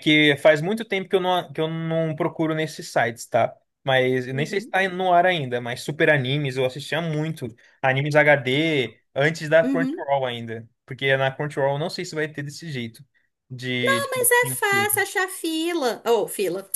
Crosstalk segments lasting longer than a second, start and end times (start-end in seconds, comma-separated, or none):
none